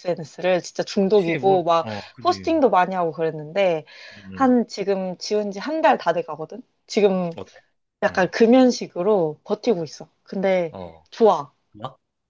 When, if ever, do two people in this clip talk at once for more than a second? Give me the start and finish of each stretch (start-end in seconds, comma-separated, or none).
1.1-2.6